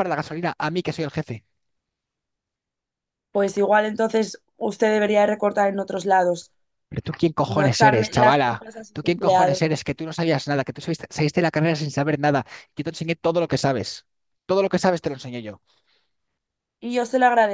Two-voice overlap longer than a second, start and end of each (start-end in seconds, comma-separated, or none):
7.4-9.6